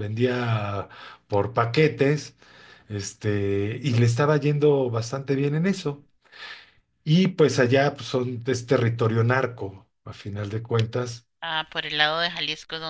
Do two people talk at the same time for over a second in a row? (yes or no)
no